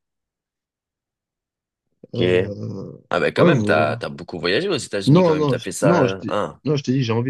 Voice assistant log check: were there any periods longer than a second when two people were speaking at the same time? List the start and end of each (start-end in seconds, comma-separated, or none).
5.0-6.6